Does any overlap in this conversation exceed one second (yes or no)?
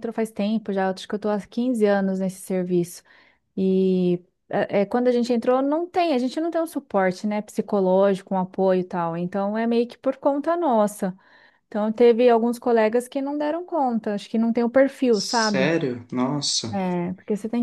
no